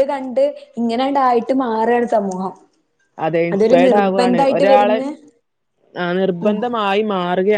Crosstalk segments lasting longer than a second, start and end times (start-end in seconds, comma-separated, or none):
3.5-5.0